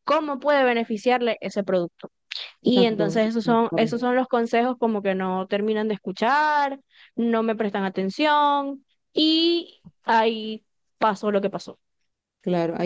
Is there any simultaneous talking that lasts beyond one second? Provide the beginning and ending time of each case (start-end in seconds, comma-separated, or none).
2.6-4.0